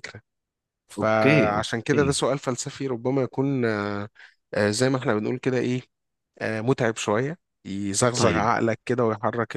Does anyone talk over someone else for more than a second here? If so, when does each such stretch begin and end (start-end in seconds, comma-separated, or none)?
1.0-2.2